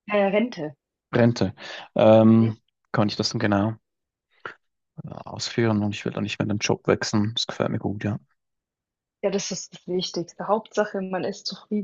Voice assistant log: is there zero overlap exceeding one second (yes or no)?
yes